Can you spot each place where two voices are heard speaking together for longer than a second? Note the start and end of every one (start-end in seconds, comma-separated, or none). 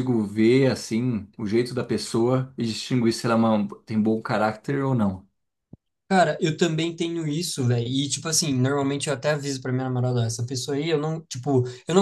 none